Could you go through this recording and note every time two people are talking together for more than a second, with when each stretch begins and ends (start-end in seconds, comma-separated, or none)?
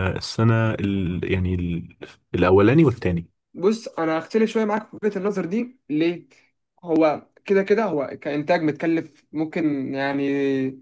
none